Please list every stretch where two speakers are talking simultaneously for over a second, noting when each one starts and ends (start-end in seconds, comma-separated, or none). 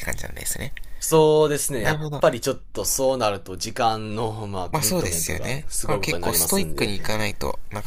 4.7-6.9